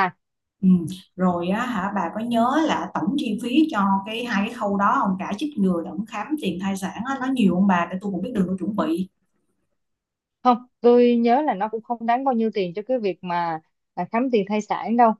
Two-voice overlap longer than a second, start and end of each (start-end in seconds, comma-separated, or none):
none